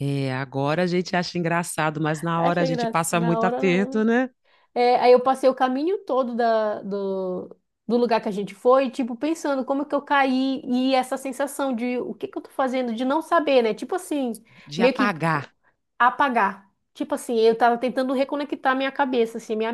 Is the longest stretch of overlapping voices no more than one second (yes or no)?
no